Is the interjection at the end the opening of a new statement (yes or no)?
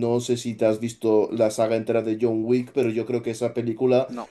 no